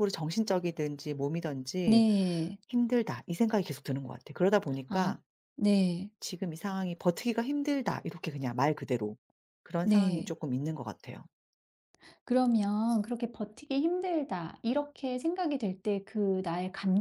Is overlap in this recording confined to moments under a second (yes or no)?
yes